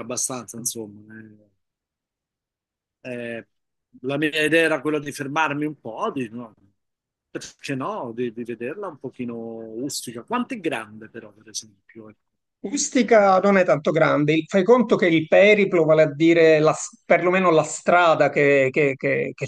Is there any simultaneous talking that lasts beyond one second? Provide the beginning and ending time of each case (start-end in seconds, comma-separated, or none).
none